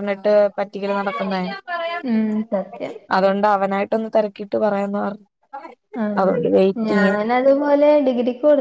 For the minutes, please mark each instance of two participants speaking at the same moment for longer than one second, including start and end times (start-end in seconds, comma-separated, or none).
none